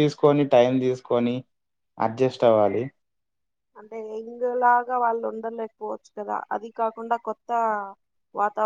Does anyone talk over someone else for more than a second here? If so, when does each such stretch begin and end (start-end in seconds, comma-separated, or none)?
none